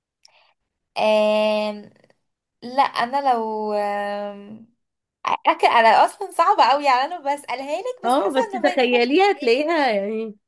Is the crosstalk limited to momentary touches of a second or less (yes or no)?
no